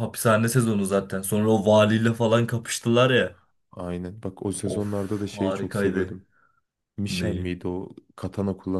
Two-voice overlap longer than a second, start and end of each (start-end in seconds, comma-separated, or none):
4.7-6.2